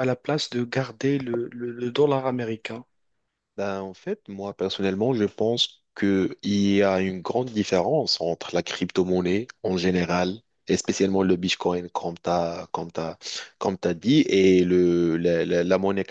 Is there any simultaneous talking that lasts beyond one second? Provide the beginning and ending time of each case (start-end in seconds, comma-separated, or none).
none